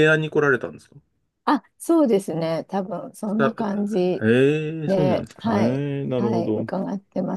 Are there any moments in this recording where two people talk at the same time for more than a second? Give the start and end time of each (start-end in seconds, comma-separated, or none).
4.8-6.7